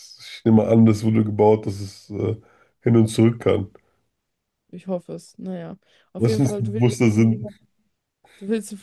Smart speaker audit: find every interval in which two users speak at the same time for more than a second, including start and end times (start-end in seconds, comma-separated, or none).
6.2-7.5